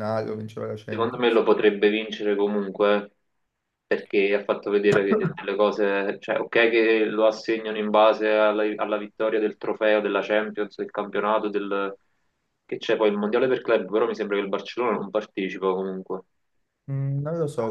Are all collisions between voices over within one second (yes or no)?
yes